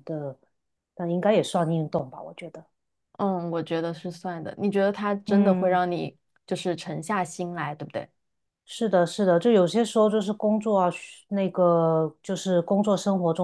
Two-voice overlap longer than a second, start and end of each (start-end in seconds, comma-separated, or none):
none